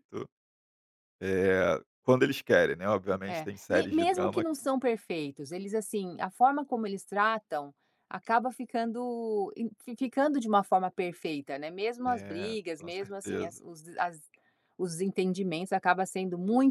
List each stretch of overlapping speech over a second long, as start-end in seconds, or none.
3.2-4.5, 12.0-13.6